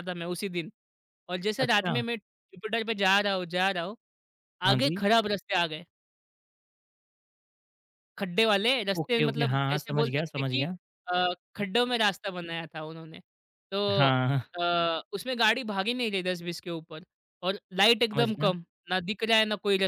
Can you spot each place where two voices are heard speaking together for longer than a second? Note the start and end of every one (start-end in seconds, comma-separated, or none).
9.0-10.7